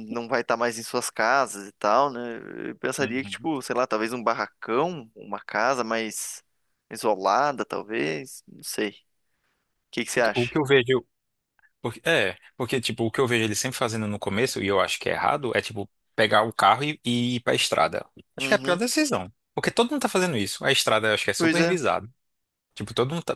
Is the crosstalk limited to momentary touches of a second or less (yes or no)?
yes